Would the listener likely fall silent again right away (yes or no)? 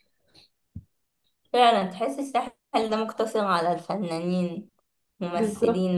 no